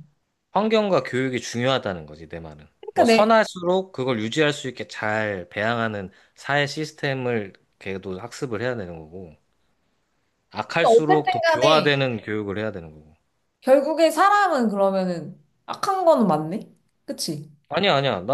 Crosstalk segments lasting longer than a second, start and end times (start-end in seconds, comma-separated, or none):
10.7-11.9